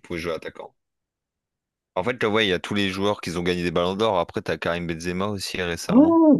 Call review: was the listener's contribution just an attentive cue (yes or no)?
no